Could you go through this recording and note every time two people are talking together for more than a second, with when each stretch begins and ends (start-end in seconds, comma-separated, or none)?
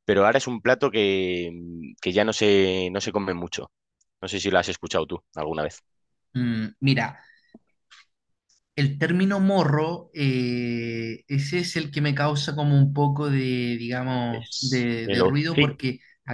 14.3-15.8